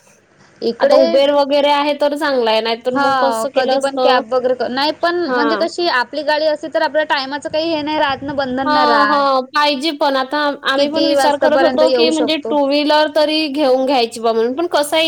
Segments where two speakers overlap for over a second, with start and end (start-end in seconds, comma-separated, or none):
10.8-12.5